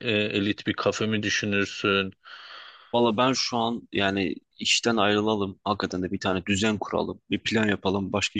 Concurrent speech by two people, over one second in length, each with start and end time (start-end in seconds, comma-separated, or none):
none